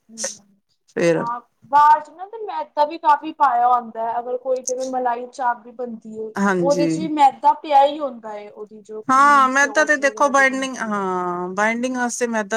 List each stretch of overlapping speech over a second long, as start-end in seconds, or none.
9.1-11.0